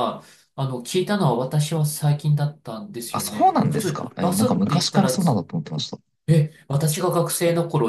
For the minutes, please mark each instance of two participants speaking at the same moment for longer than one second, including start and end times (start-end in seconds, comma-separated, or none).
3.1-5.4